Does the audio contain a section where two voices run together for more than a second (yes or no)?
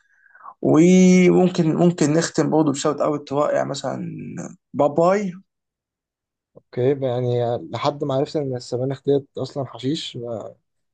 no